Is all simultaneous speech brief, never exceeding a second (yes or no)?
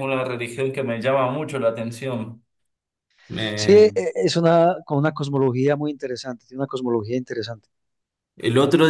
yes